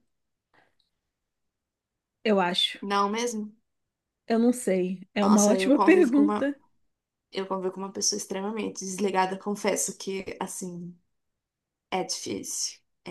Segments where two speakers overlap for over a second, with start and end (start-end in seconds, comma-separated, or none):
5.2-6.5